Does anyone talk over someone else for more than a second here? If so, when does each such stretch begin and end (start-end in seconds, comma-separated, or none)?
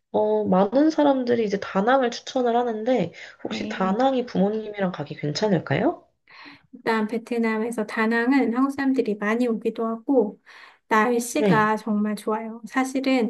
none